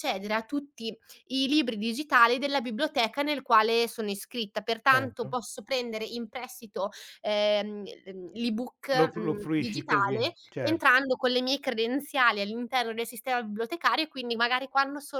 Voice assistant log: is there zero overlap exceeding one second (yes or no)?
no